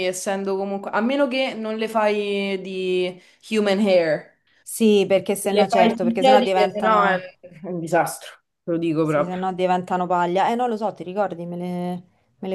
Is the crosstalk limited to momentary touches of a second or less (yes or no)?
no